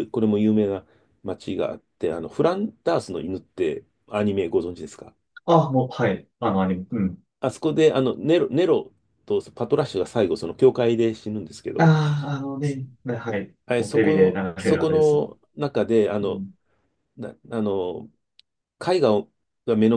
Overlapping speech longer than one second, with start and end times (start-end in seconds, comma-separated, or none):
13.7-15.2